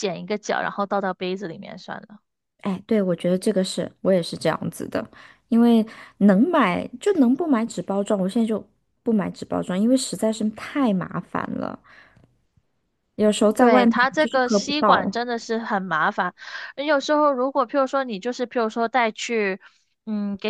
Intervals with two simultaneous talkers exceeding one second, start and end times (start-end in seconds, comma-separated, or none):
13.6-15.2